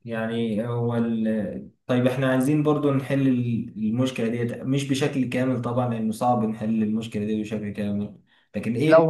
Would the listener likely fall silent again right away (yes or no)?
yes